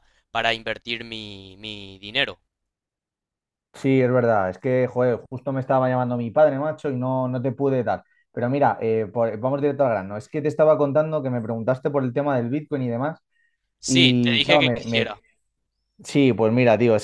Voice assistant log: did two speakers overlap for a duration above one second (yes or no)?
yes